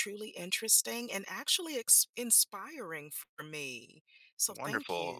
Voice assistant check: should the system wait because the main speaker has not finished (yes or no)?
no